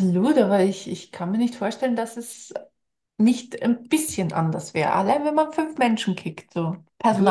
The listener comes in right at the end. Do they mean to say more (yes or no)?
yes